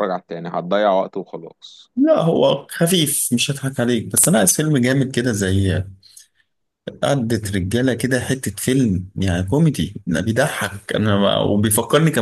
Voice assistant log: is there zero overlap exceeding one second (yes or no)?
yes